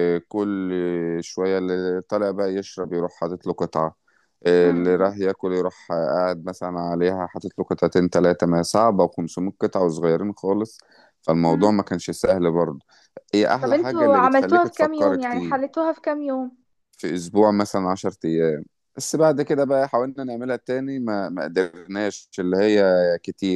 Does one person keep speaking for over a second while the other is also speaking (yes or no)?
yes